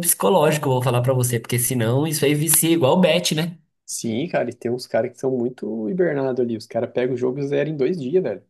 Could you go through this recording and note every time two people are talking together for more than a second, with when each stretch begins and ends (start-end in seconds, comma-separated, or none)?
none